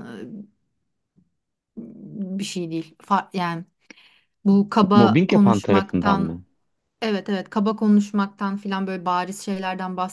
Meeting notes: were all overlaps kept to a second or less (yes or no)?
no